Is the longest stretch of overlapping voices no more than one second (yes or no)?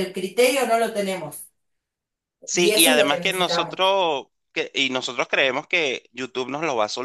no